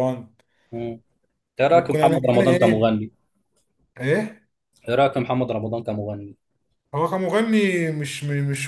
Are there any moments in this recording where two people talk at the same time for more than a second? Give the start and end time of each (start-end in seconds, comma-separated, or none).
1.7-3.0